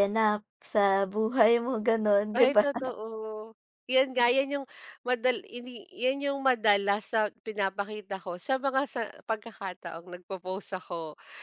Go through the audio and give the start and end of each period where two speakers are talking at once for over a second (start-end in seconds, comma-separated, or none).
none